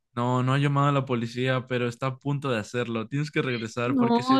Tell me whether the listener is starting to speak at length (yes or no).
yes